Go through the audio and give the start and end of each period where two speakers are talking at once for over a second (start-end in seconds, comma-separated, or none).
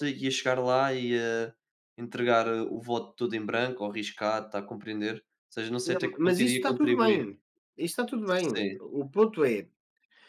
5.8-7.2